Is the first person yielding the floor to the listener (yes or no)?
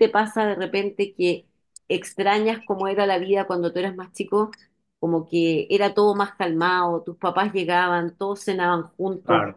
no